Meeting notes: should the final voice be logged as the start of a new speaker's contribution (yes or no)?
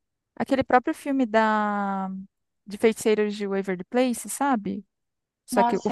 yes